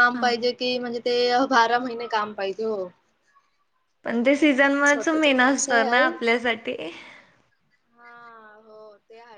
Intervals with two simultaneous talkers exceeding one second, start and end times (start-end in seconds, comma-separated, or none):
4.2-6.1